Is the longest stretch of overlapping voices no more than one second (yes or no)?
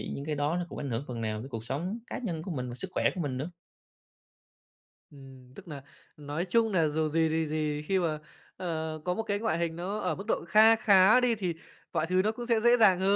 yes